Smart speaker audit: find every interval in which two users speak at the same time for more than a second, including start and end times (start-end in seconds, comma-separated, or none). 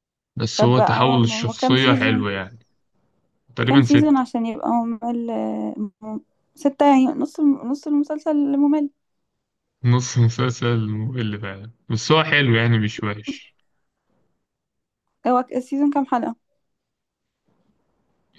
0.6-2.3